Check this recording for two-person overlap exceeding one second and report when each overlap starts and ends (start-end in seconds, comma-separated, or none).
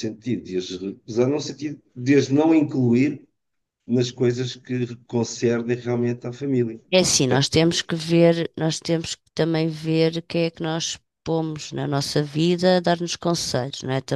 none